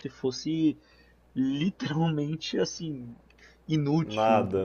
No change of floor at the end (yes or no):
yes